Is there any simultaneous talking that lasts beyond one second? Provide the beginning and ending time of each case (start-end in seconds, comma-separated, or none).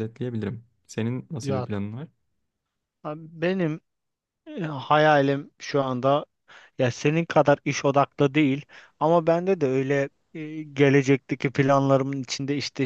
none